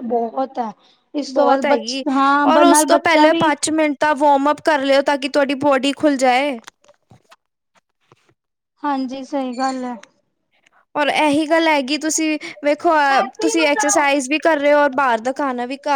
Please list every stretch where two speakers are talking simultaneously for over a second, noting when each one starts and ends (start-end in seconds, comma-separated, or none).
none